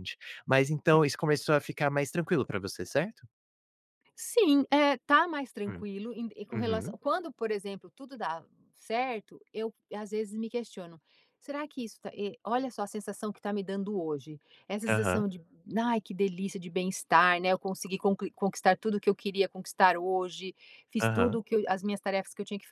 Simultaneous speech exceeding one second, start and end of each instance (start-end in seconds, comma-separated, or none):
none